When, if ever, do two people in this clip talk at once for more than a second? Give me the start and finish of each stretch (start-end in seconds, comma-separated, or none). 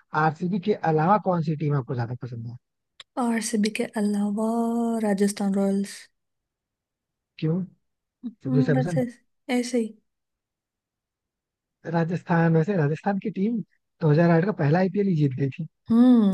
none